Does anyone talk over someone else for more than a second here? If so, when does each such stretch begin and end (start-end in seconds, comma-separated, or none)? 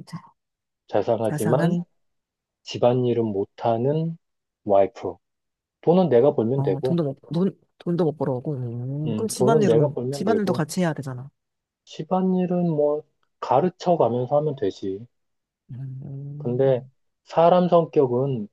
9.1-10.6